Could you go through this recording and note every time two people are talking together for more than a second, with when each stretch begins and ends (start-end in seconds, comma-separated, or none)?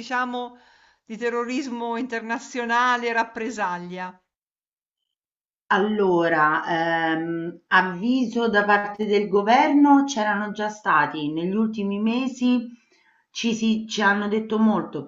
none